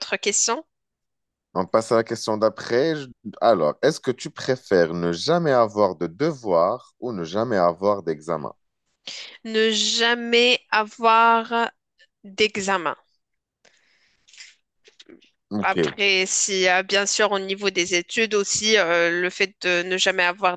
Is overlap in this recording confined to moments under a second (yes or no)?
yes